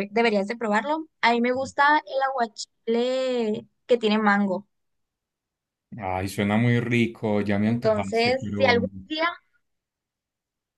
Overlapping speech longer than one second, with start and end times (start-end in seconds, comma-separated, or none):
7.7-8.9